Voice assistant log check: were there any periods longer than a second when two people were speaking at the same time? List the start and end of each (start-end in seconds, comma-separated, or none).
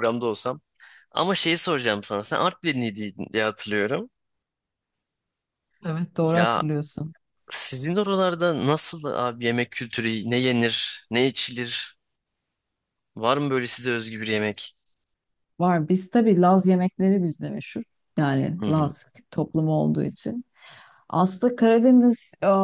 none